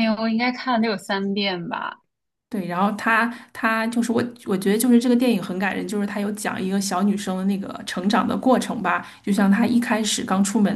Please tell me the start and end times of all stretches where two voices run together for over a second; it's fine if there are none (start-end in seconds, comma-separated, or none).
none